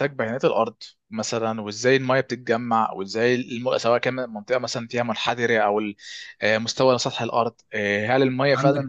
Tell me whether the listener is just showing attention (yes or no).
no